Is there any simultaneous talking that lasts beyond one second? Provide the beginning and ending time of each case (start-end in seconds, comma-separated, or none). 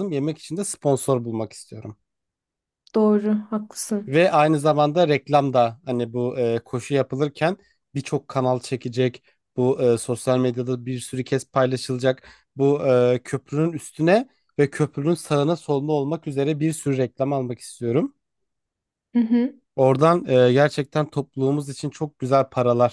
none